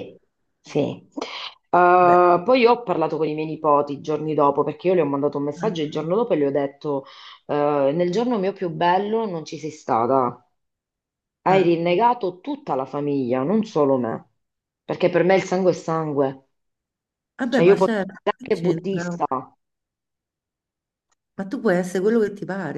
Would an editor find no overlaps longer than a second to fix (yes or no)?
no